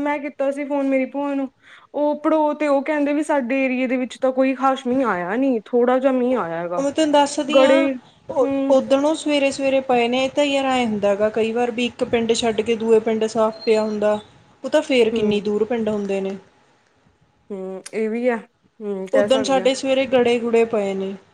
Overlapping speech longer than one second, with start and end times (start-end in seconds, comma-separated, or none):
none